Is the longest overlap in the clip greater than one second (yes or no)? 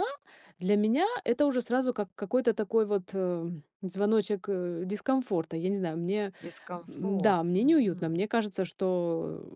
yes